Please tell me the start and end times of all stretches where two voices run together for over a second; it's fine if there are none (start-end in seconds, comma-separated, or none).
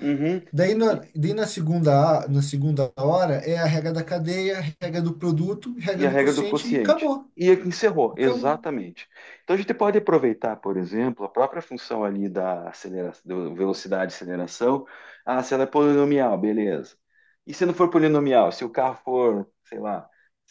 5.9-7.3